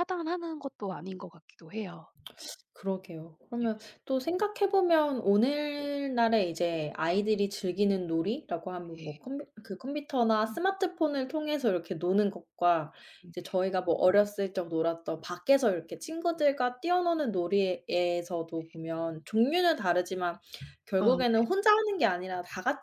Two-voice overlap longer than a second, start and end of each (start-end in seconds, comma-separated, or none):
none